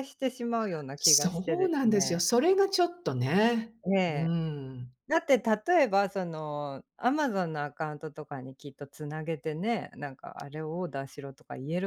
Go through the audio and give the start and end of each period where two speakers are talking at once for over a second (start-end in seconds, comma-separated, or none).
1.0-2.2